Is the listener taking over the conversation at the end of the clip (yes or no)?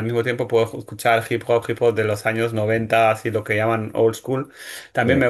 no